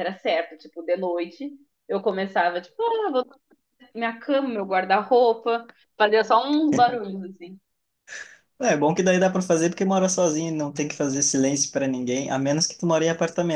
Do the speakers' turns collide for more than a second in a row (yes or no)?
no